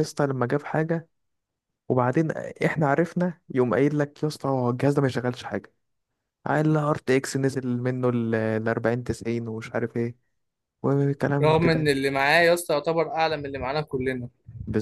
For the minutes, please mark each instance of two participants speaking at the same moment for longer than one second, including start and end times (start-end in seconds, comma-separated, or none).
none